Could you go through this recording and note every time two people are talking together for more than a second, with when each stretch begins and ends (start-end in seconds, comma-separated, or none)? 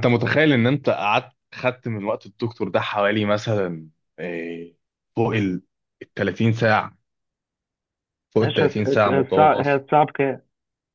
8.4-9.8